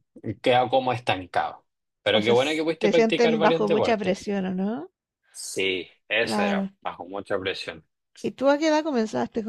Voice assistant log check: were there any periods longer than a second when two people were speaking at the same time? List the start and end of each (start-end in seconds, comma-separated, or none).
2.2-4.3